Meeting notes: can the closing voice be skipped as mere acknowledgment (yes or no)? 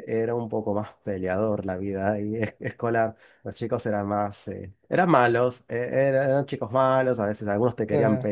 yes